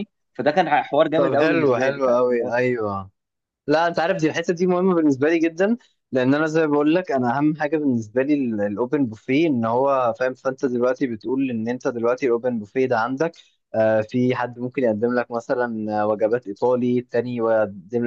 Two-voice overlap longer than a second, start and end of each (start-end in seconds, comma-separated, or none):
1.1-2.5